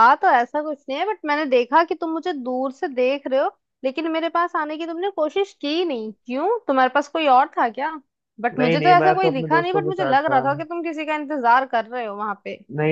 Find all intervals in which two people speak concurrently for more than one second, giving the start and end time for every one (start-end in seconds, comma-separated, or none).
8.6-10.4